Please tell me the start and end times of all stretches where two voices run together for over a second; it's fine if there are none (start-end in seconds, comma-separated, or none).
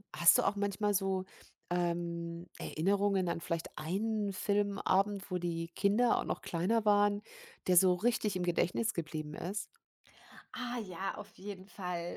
none